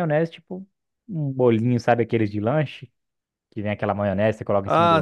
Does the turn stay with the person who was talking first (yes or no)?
no